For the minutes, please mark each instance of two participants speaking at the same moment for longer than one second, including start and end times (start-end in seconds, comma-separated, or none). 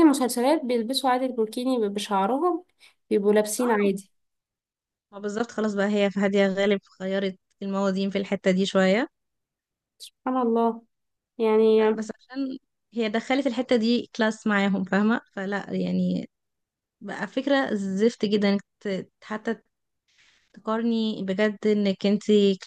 none